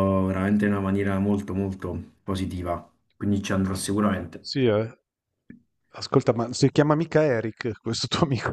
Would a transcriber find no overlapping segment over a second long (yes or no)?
yes